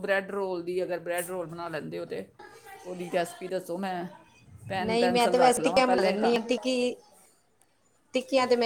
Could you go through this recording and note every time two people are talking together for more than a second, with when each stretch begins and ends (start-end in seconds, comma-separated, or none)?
4.8-6.3